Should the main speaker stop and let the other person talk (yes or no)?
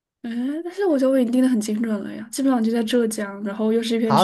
yes